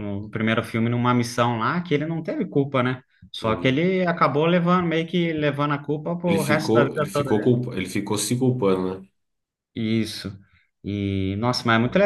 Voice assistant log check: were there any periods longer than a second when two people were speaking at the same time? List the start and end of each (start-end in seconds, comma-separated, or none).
6.2-7.5